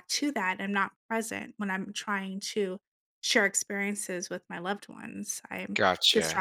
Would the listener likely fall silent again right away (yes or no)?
no